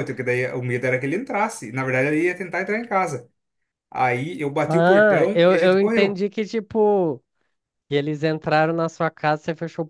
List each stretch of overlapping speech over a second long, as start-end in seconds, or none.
4.6-6.2